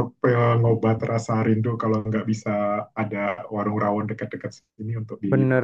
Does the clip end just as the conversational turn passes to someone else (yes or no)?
yes